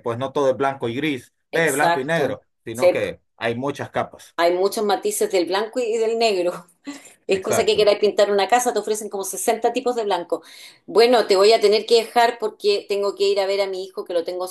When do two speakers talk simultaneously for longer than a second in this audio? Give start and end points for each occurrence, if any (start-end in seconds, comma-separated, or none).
1.5-3.0